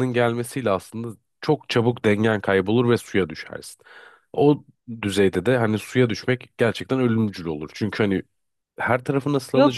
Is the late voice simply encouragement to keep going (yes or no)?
no